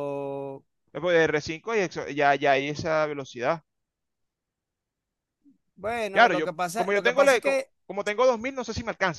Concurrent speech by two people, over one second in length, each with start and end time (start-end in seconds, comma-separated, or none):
6.1-7.7